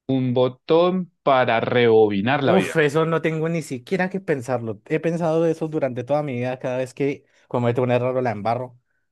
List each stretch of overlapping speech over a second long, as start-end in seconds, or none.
none